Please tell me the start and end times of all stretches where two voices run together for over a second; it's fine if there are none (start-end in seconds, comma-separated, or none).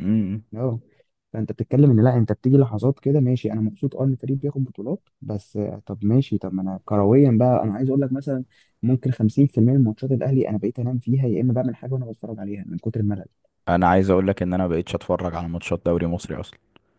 none